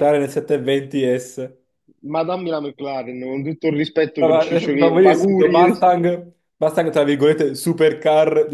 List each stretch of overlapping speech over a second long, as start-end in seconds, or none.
4.2-5.7